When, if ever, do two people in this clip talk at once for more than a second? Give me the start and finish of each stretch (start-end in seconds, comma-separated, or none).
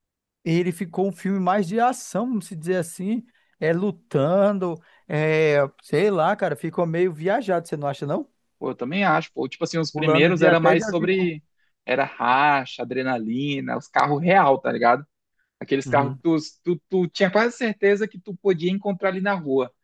9.9-11.3